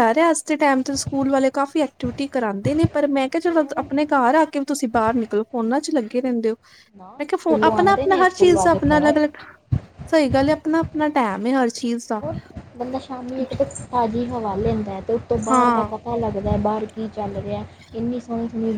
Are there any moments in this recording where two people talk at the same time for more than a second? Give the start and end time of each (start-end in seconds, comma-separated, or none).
7.2-9.2